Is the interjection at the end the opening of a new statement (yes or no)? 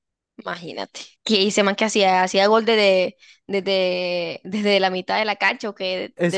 yes